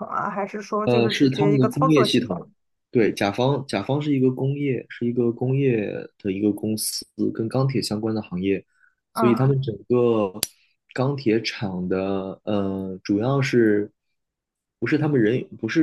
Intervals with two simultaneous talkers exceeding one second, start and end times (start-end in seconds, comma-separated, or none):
0.8-2.5